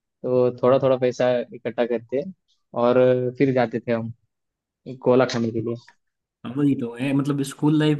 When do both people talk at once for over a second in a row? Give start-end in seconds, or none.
none